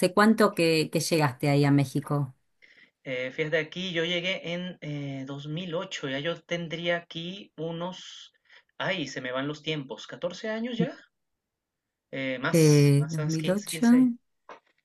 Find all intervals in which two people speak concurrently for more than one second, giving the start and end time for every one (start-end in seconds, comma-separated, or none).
12.5-13.9